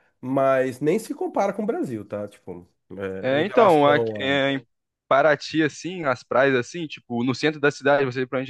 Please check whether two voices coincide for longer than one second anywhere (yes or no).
yes